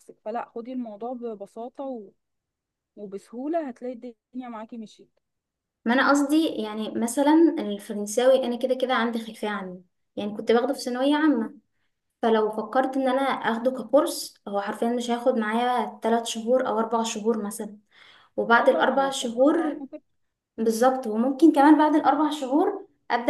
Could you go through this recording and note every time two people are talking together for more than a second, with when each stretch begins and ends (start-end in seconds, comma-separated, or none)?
18.6-19.8